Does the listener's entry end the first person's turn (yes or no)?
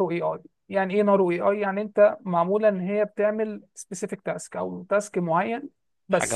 yes